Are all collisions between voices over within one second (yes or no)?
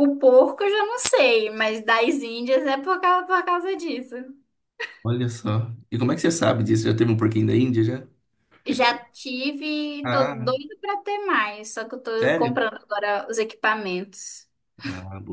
yes